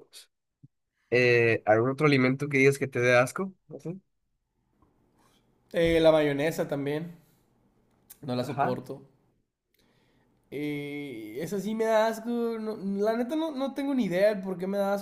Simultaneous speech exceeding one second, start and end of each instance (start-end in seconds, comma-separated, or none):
none